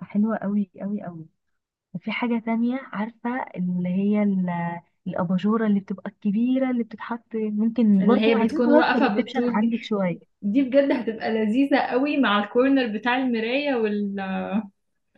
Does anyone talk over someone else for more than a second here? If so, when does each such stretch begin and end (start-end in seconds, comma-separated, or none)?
8.0-9.7